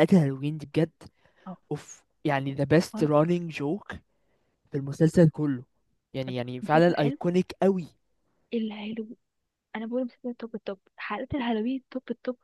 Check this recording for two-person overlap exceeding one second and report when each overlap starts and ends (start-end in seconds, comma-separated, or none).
none